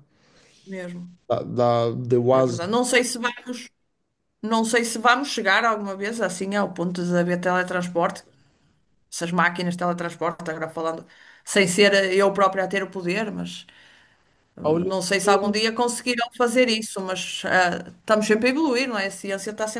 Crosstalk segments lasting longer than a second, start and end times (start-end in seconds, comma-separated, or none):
none